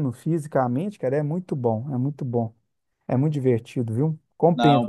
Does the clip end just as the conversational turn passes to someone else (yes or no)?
no